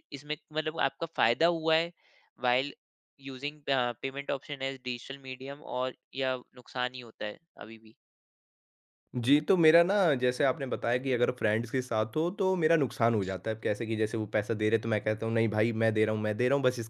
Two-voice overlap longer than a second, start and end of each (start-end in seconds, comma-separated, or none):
none